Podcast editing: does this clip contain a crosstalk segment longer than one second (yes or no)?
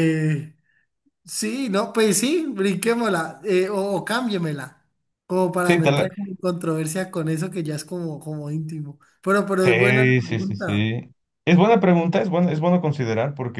yes